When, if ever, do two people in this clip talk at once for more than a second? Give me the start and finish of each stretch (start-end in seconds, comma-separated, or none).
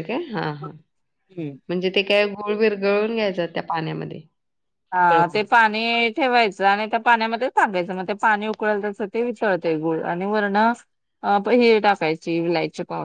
none